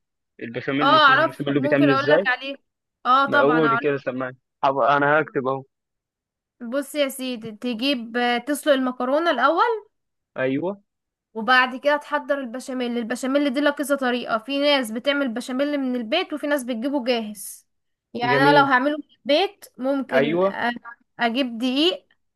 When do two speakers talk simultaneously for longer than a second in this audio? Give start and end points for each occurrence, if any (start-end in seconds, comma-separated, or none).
0.8-2.2